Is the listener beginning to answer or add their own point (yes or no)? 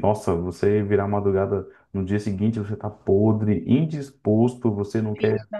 no